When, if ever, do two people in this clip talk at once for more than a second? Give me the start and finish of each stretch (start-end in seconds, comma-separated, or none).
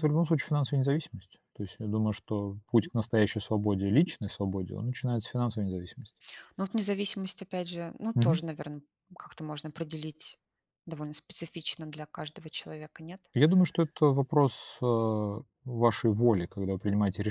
none